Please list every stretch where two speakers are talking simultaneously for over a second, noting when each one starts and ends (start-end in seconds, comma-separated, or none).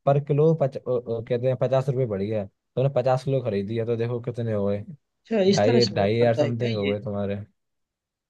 5.5-7.0